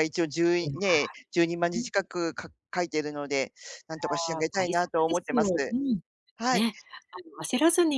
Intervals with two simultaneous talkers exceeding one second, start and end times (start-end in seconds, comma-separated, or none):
3.9-5.5